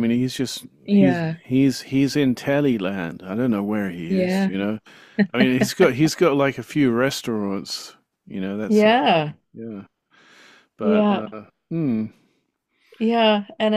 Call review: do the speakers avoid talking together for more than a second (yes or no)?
yes